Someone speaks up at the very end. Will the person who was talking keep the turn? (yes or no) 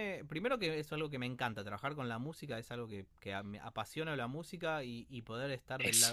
yes